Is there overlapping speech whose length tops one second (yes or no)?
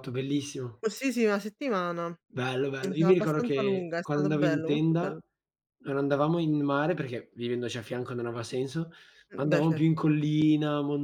yes